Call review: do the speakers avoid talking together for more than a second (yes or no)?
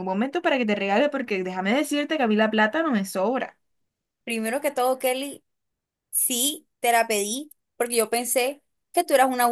yes